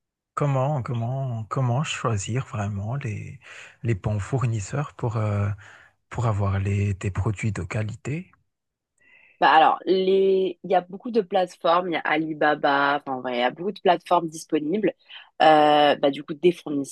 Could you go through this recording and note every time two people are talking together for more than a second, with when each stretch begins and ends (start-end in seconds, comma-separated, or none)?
none